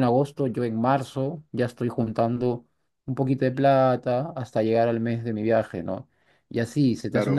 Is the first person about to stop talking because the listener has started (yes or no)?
no